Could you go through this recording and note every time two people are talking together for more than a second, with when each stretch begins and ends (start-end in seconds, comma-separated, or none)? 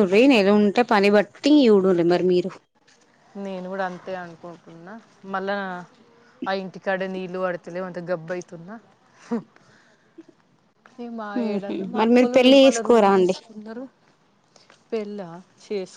11.4-13.3